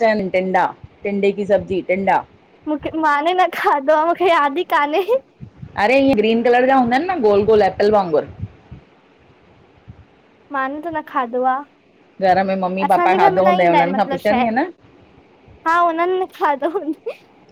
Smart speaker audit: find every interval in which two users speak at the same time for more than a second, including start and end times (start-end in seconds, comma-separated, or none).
12.8-14.5